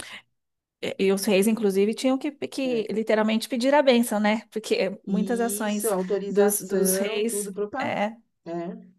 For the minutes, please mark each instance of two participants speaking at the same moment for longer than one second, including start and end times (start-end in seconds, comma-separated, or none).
5.1-8.0